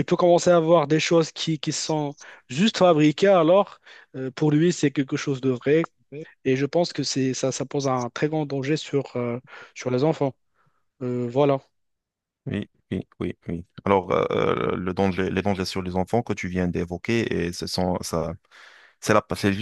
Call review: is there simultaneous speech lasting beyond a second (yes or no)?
no